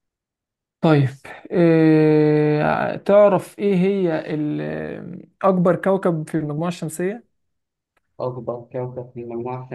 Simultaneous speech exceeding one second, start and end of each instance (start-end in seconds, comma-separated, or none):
none